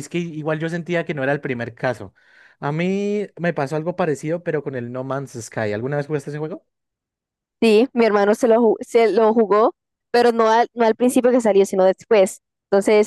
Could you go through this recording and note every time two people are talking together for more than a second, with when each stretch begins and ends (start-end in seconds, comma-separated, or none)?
none